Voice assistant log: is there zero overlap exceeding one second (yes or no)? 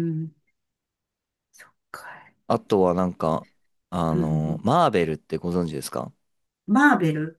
yes